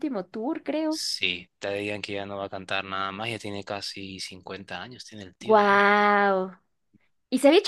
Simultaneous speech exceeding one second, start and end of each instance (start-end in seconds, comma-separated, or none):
none